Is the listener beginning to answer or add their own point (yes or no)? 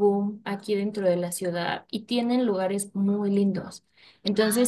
no